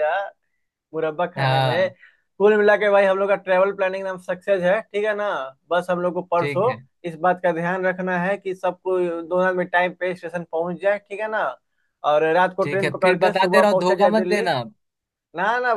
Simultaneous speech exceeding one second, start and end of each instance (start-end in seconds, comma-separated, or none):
12.6-14.4